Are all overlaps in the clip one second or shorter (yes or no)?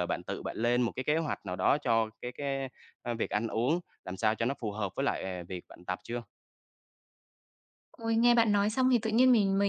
yes